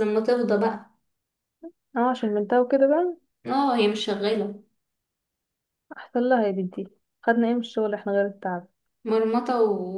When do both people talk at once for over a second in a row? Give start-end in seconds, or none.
none